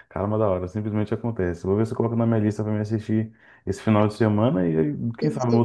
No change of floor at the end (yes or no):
no